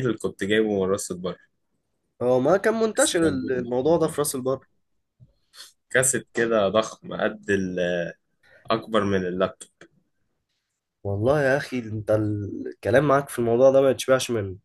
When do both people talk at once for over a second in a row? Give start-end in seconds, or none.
2.9-4.4